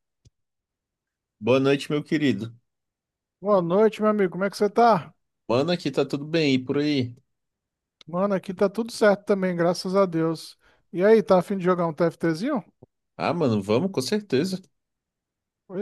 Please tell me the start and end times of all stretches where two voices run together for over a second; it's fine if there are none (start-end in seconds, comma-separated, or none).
none